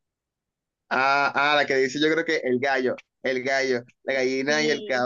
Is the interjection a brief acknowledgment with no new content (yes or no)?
yes